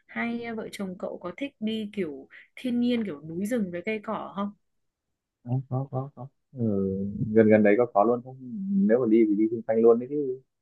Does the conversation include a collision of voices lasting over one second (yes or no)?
no